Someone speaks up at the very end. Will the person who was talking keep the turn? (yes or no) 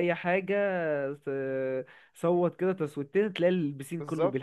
no